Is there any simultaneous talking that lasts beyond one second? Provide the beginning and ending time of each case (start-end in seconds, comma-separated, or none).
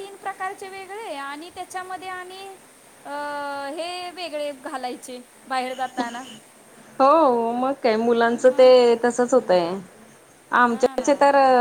none